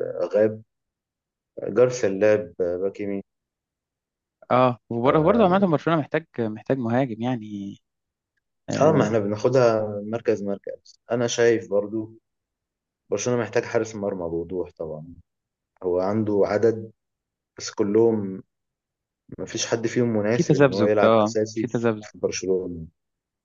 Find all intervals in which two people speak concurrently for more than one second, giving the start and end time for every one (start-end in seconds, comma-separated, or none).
20.4-22.1